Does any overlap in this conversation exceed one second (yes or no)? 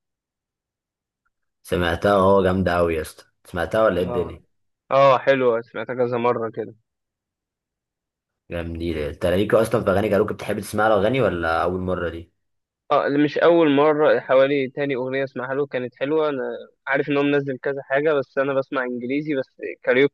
no